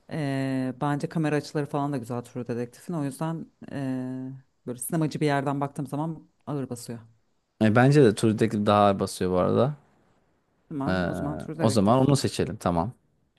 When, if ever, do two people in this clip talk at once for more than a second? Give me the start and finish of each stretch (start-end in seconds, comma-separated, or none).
none